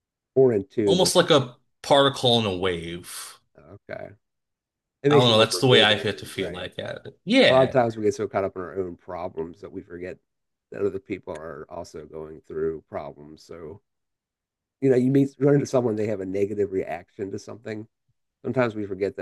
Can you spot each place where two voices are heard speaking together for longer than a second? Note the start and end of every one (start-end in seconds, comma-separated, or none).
5.1-6.7